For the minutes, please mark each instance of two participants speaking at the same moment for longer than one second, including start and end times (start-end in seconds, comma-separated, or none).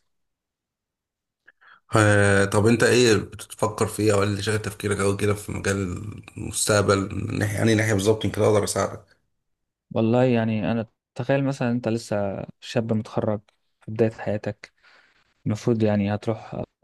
none